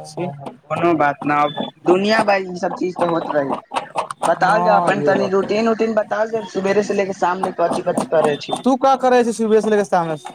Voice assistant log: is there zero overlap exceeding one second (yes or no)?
no